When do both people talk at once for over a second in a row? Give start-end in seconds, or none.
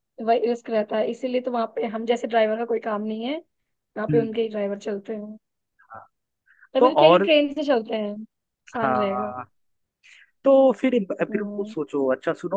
none